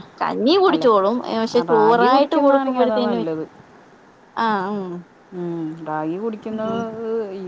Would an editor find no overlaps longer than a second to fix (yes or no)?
no